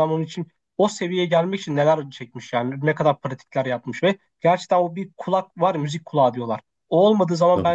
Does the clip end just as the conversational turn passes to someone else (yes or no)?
no